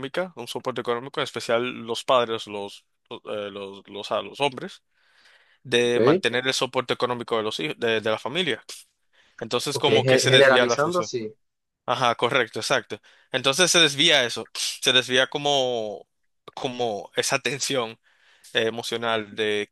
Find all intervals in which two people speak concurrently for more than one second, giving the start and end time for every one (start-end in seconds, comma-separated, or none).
9.7-11.1